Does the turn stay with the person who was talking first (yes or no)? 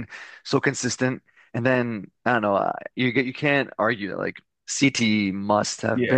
no